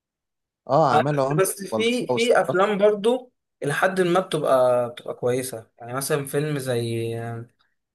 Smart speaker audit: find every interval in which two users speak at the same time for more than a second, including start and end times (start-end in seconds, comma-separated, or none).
0.9-2.8